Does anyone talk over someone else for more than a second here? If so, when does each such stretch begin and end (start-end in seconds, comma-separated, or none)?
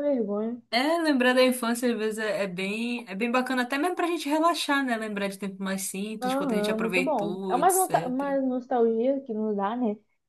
6.2-8.4